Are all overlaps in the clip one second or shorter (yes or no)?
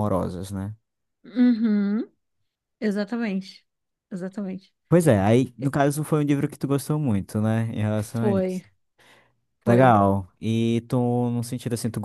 yes